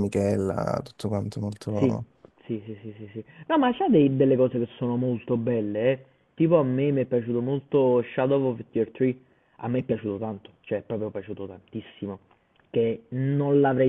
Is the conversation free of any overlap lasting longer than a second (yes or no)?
yes